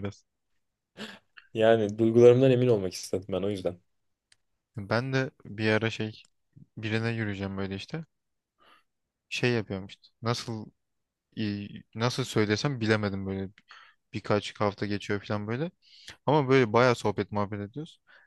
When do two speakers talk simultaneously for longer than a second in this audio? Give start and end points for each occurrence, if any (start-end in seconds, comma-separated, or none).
none